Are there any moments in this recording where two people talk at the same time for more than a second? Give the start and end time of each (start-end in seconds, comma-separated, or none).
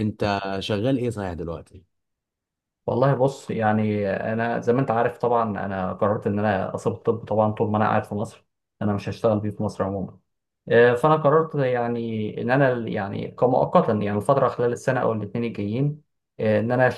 none